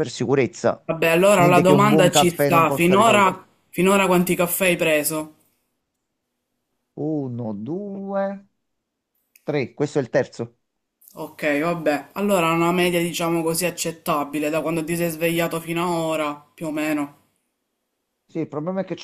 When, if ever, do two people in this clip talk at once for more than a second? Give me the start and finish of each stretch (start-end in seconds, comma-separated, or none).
1.4-3.4